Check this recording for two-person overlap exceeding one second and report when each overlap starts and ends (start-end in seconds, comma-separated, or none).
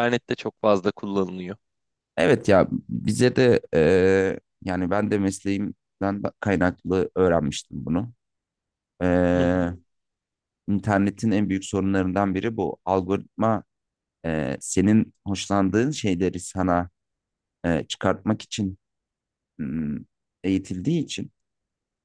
none